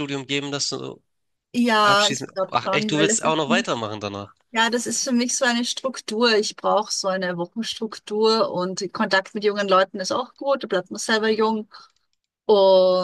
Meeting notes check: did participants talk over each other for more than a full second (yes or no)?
yes